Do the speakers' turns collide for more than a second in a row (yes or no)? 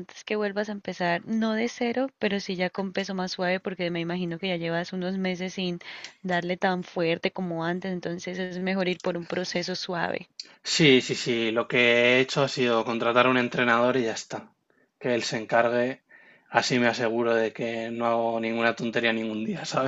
no